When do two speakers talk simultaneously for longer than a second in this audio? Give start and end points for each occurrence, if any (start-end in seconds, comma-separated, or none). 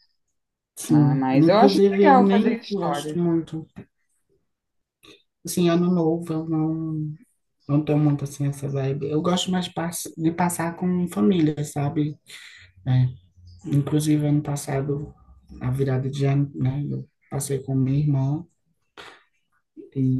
0.9-3.2